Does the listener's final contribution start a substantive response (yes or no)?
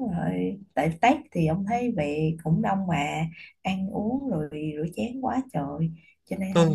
yes